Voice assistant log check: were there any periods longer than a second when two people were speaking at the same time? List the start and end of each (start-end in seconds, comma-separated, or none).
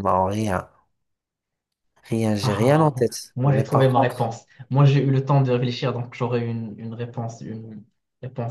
2.4-4.3